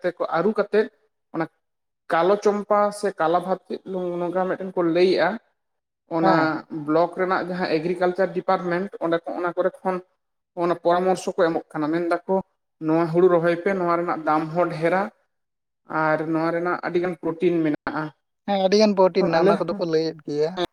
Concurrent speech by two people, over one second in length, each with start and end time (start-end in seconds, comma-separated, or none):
none